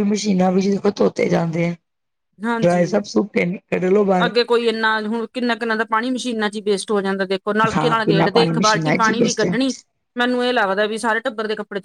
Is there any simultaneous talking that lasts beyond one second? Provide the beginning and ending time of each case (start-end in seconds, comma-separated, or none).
7.8-9.6